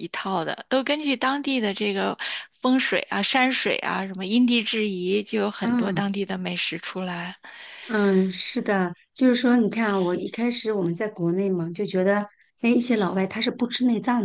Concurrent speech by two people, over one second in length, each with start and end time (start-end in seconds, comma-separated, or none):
none